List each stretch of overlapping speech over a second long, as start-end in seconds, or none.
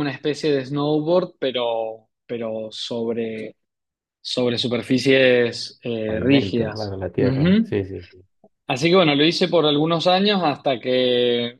6.0-7.8